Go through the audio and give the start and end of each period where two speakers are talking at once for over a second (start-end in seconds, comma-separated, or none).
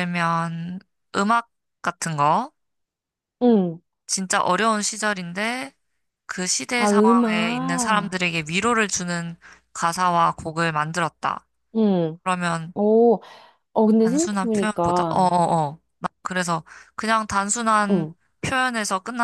6.8-8.2, 14.0-15.3